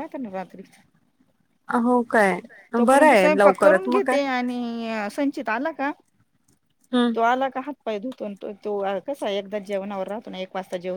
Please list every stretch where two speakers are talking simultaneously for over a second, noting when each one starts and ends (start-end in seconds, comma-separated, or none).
2.9-4.2